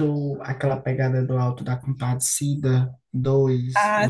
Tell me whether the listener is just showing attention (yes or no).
no